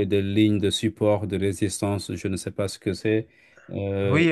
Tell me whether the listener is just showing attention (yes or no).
no